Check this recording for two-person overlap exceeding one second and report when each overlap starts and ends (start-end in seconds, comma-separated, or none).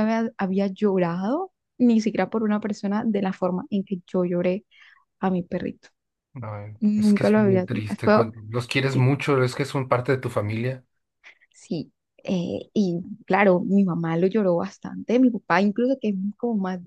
6.8-8.2